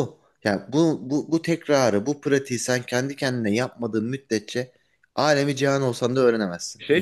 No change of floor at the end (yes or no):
no